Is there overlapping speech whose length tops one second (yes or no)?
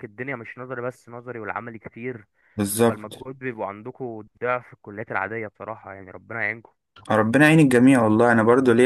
no